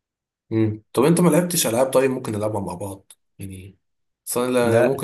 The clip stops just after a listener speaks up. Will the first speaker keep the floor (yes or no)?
yes